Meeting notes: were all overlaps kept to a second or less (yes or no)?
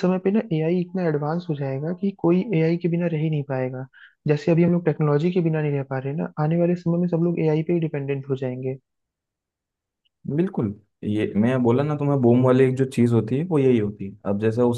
yes